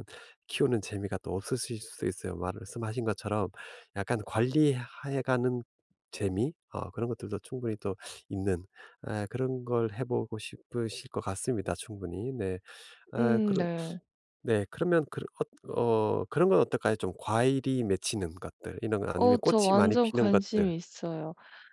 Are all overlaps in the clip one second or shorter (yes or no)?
no